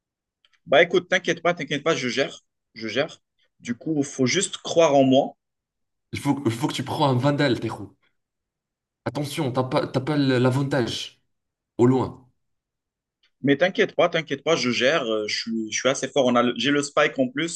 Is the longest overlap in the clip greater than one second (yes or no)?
no